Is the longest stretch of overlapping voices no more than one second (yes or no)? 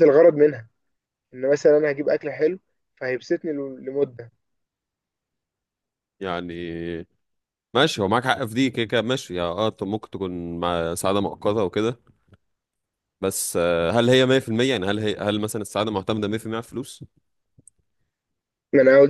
yes